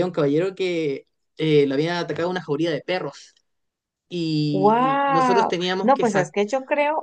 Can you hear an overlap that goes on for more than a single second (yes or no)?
yes